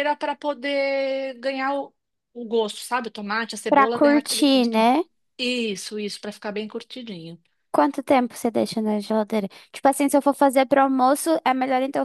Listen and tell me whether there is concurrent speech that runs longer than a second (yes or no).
yes